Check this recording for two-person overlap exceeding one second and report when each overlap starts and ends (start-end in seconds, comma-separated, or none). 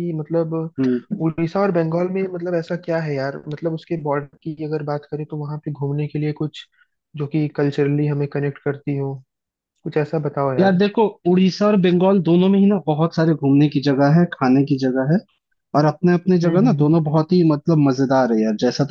none